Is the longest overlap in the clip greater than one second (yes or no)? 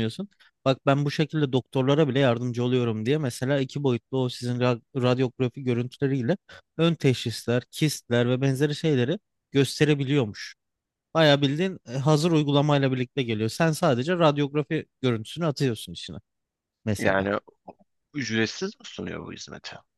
no